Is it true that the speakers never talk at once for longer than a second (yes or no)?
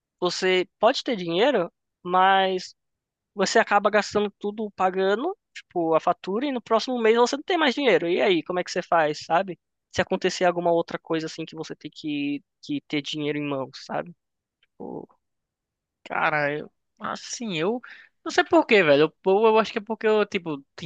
yes